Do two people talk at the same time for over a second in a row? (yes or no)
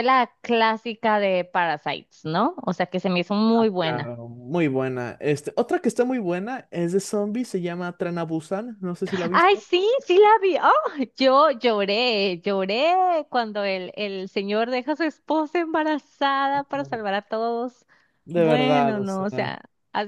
yes